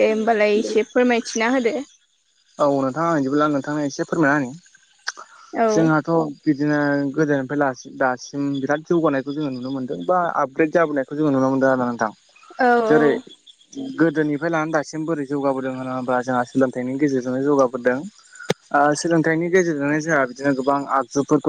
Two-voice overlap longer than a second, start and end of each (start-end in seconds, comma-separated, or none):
none